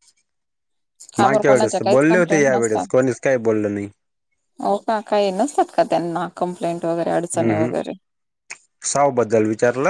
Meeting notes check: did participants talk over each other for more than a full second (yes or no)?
yes